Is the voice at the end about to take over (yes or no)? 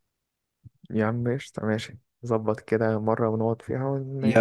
yes